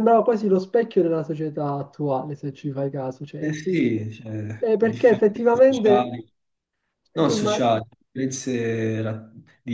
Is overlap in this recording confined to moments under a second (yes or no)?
no